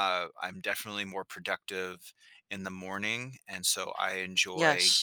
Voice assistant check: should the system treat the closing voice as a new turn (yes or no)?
no